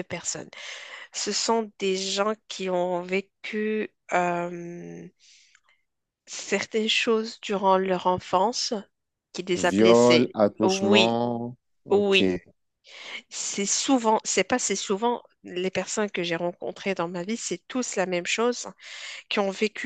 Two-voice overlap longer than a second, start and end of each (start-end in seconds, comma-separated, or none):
9.6-11.2